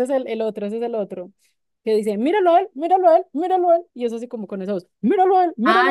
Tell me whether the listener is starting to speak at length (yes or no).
yes